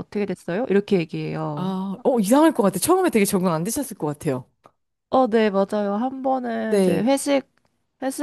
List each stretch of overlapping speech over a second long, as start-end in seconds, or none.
none